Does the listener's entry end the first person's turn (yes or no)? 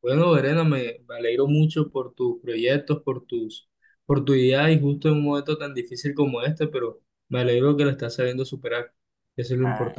yes